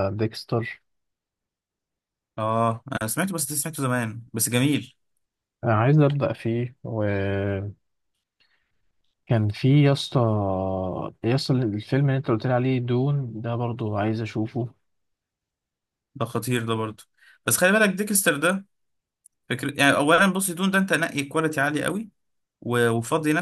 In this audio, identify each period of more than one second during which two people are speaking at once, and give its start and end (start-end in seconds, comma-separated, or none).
none